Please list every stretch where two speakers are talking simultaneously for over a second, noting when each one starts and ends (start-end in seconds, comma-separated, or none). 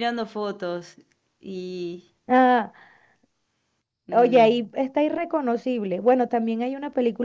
none